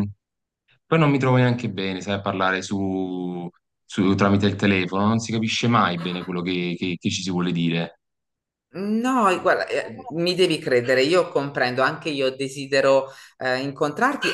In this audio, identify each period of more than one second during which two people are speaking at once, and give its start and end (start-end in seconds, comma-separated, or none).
none